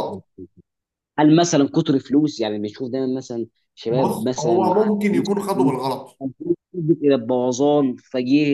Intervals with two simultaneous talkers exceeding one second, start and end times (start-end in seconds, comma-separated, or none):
3.9-5.7